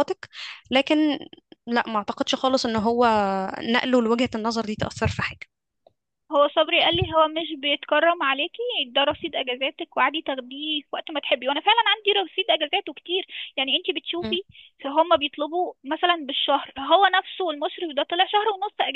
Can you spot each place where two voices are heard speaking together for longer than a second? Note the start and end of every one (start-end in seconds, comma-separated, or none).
none